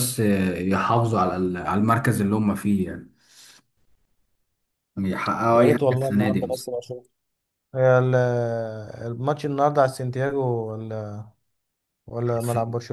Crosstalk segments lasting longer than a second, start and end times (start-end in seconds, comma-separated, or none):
5.5-6.7